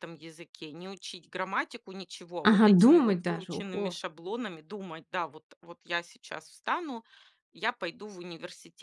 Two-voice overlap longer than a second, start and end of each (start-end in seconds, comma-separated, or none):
2.4-4.0